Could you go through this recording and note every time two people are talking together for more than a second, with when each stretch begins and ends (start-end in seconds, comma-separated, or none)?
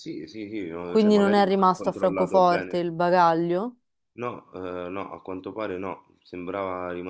0.8-2.9